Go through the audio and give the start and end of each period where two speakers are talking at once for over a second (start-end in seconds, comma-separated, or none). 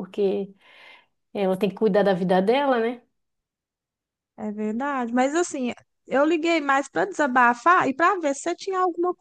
none